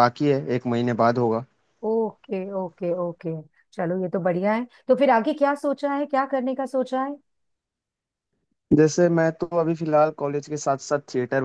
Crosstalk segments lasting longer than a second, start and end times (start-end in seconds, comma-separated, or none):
none